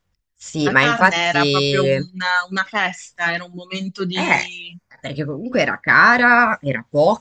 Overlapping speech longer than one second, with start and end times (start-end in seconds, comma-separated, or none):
0.6-2.1